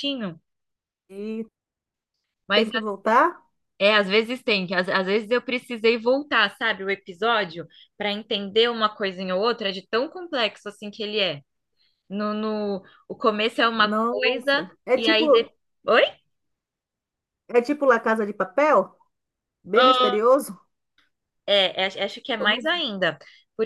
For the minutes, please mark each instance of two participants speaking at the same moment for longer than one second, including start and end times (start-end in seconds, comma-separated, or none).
13.7-15.2